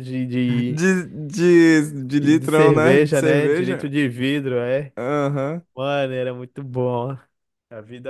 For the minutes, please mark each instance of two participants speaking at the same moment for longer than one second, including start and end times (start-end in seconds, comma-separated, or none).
2.2-3.9